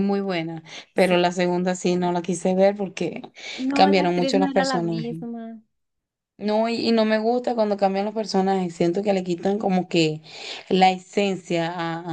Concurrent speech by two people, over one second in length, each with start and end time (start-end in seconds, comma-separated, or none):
3.7-5.2